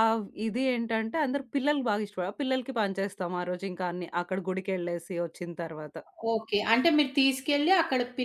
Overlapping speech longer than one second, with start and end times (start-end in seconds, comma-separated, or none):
none